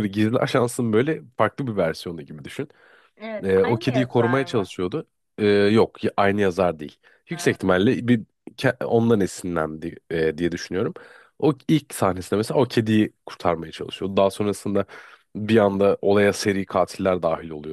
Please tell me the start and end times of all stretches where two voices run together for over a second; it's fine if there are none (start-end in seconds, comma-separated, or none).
3.4-4.7